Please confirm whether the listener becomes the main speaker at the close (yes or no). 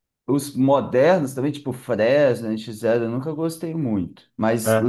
no